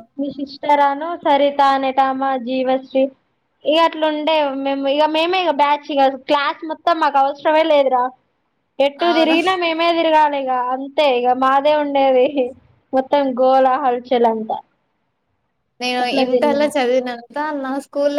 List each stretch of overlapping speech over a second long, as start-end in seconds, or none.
none